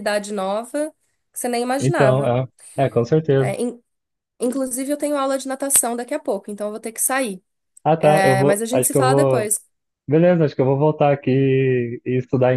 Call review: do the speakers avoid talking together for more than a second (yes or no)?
no